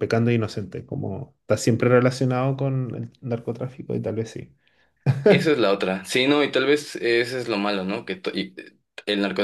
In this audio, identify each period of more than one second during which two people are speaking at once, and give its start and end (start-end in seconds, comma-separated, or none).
none